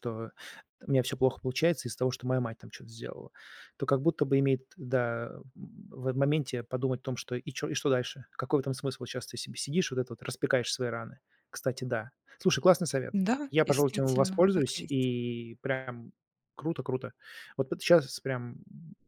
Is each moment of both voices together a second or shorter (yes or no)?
no